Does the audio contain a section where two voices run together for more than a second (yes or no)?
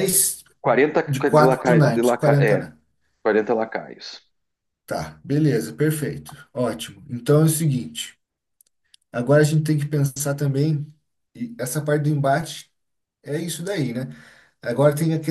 yes